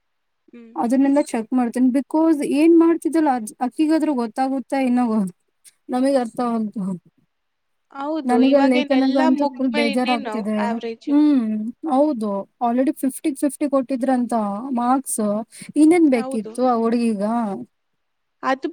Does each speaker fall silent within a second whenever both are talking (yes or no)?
no